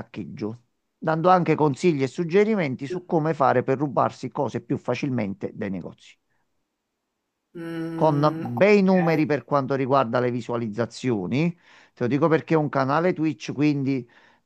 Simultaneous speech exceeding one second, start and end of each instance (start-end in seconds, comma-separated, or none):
7.9-9.2